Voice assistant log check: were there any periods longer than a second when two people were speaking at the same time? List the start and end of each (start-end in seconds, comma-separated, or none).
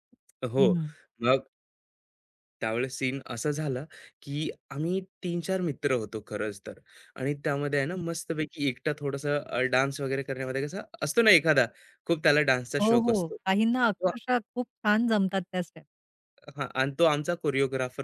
12.8-14.1